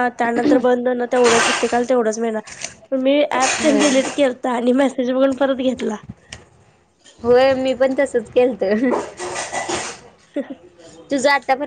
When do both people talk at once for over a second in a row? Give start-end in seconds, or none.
none